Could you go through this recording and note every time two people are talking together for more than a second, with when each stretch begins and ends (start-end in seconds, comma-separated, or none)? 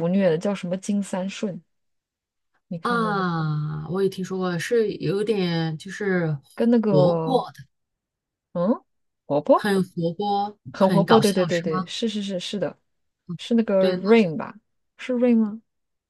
10.7-11.9